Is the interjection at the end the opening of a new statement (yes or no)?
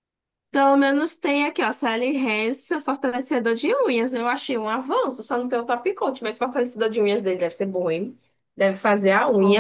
yes